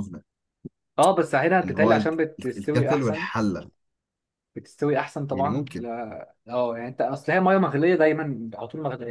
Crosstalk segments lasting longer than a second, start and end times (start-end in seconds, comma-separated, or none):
1.6-3.3